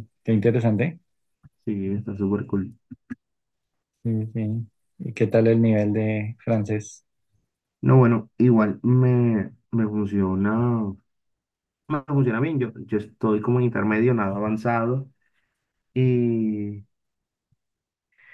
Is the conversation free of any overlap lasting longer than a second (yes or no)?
yes